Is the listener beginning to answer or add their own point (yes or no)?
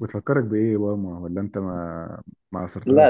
yes